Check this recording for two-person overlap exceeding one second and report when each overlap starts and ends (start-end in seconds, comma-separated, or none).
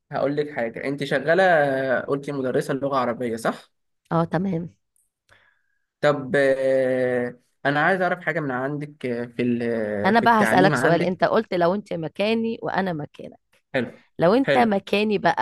10.1-11.2